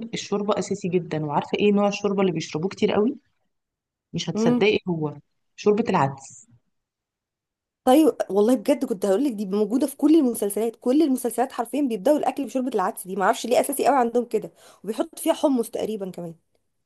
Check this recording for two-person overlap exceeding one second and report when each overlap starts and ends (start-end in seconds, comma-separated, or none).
none